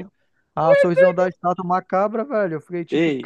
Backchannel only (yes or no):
no